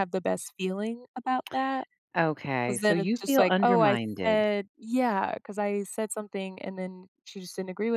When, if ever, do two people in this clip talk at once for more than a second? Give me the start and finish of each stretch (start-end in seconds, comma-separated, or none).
2.6-4.2